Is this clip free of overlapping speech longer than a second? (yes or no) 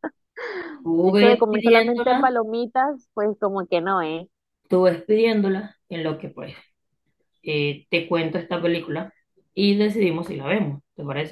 no